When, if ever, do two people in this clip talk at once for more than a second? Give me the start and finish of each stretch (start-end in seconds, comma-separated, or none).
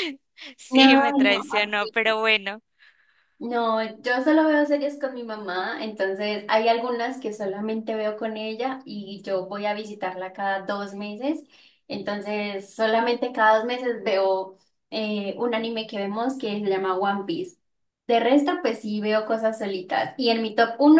0.7-2.1